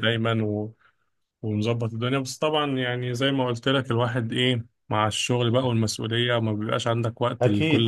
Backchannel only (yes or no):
no